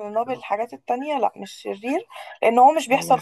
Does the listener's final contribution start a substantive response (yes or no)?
no